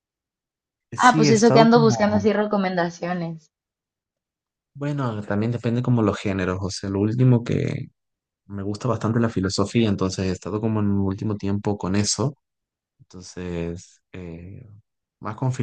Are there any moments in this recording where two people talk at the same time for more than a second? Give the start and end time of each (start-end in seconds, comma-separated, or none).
0.9-2.3